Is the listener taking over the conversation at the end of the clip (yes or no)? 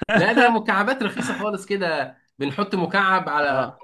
no